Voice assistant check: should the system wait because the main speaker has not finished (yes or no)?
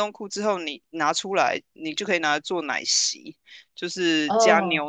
yes